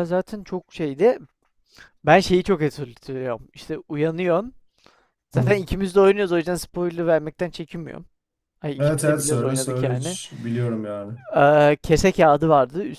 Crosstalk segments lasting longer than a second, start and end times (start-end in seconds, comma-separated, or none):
8.8-10.2